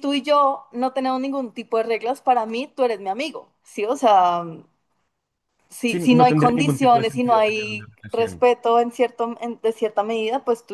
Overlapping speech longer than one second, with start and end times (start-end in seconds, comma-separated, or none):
5.8-8.4